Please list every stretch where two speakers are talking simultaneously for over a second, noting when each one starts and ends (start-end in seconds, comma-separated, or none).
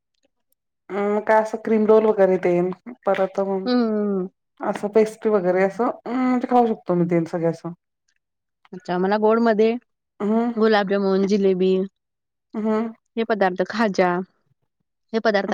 none